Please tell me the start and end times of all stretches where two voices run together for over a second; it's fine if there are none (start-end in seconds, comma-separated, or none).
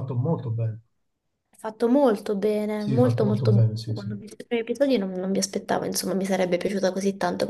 2.7-4.2